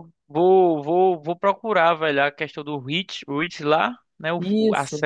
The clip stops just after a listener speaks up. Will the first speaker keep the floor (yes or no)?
yes